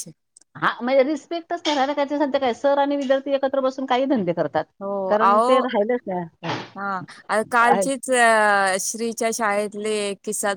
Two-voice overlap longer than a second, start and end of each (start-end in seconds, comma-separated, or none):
none